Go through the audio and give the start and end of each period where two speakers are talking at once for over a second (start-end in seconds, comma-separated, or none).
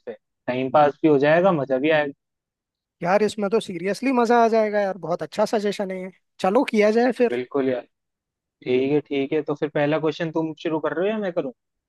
none